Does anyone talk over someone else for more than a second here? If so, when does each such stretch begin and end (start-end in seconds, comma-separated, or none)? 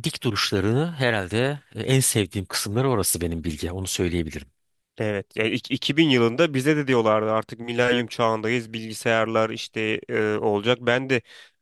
none